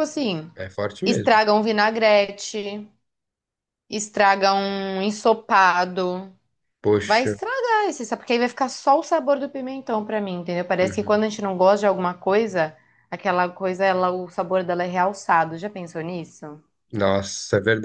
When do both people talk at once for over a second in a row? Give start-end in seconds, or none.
none